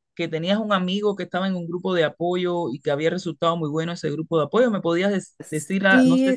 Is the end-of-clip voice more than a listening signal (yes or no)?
yes